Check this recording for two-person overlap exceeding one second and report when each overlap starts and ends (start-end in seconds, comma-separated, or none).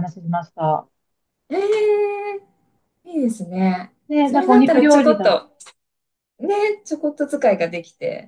4.1-5.4